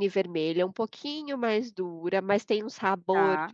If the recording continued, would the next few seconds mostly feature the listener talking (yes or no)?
no